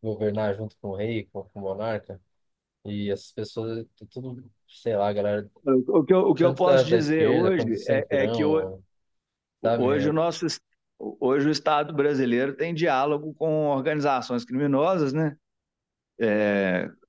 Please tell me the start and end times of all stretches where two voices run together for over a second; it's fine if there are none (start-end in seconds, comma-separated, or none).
6.4-8.6